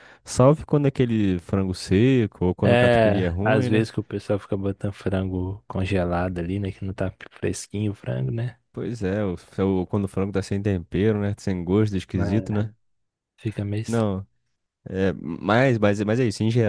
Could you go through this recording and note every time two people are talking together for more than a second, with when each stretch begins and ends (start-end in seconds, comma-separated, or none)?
2.7-3.9